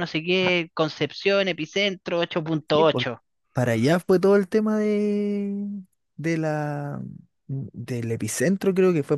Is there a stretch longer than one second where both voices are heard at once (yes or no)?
no